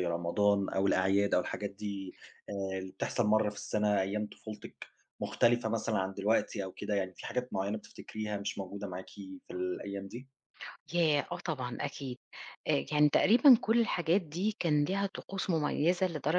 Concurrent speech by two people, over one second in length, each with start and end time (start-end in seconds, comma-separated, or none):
none